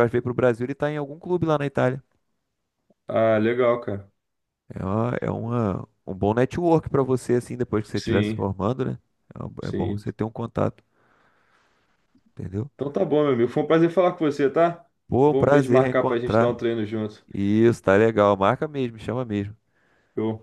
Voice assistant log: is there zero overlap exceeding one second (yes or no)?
no